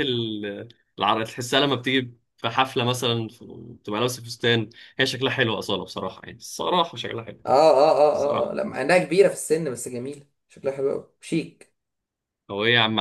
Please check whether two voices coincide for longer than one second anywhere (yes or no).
no